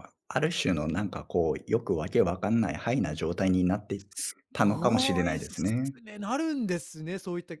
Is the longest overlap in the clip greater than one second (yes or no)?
yes